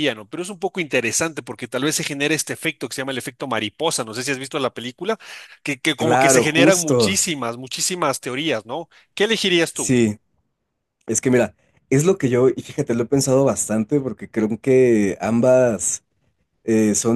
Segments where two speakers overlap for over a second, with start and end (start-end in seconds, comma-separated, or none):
6.0-7.2